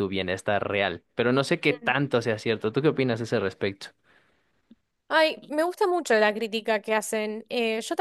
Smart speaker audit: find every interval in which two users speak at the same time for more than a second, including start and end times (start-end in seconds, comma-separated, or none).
none